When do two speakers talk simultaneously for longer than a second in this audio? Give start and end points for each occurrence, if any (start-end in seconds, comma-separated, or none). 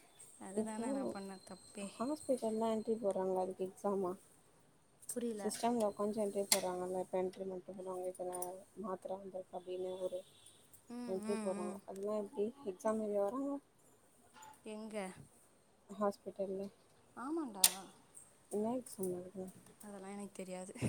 none